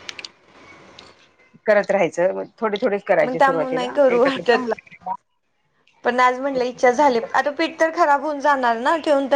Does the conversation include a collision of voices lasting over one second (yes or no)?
yes